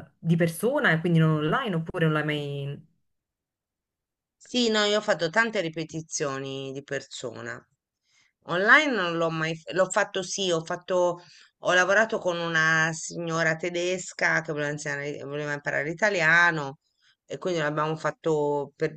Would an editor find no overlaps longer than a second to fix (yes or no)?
yes